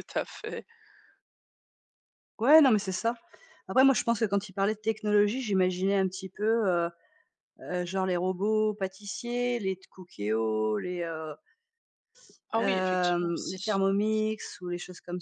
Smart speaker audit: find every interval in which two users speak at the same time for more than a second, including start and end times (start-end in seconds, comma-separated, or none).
12.5-13.8